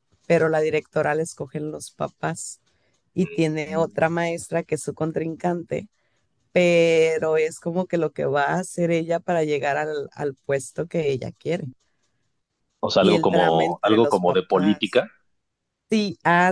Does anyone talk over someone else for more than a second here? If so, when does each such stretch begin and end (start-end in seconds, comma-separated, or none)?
13.0-15.0